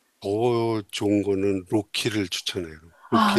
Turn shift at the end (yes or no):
yes